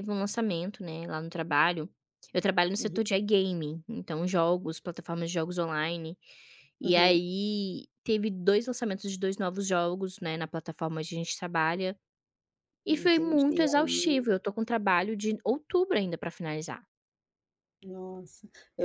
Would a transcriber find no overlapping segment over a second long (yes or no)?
no